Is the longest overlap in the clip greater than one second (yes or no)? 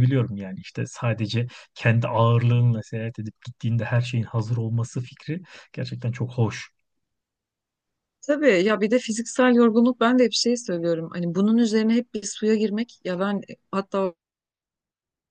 no